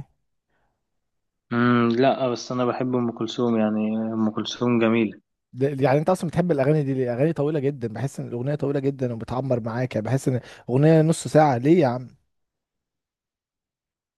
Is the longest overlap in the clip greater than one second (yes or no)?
no